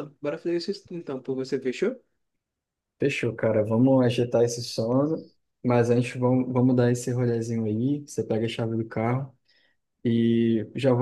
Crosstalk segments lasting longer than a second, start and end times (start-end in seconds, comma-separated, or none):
none